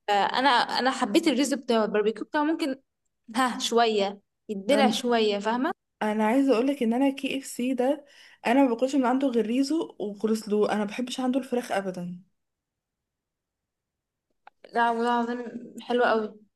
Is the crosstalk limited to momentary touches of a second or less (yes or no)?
yes